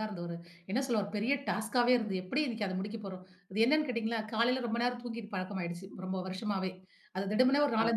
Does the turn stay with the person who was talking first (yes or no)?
yes